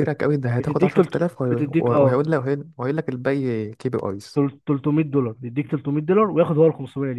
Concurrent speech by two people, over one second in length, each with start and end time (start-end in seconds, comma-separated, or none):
0.6-2.3